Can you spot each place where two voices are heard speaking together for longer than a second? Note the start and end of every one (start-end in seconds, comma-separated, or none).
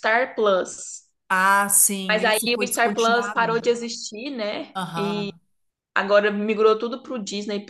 2.1-3.6